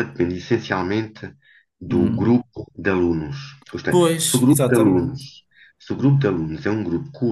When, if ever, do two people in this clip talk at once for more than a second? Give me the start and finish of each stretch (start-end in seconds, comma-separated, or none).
3.9-5.2